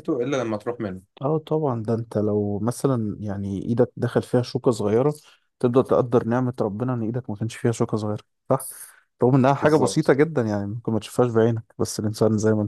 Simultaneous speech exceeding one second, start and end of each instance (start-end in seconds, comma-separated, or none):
none